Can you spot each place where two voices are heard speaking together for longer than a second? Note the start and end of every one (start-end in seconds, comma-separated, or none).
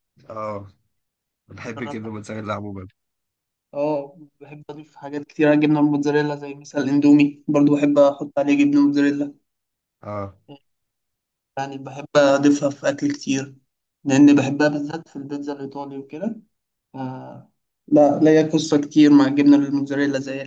none